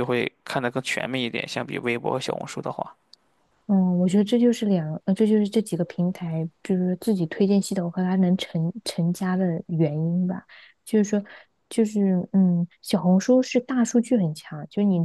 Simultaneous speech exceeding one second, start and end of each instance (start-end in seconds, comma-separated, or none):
none